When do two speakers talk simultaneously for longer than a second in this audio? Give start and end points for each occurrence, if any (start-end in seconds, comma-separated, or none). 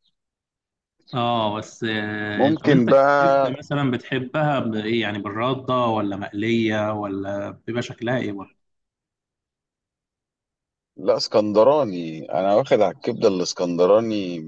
2.4-3.6